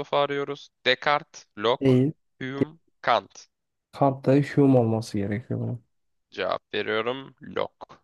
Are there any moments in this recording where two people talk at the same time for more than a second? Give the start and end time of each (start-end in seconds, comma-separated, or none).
none